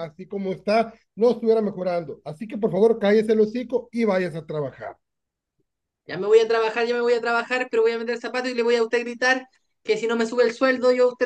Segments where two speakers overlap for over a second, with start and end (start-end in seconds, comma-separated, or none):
none